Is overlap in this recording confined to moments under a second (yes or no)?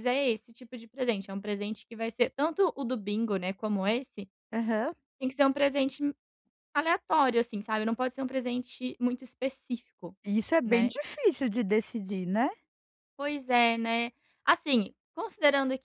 yes